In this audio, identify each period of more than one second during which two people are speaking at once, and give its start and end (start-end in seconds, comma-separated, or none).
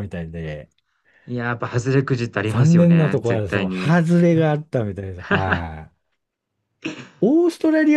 2.5-4.0